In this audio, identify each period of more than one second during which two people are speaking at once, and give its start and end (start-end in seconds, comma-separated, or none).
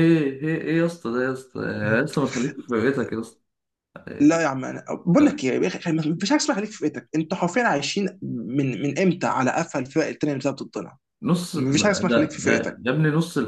11.6-12.8